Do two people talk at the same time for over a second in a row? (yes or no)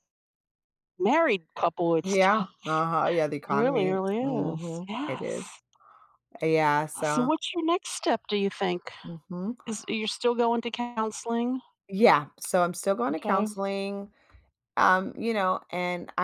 yes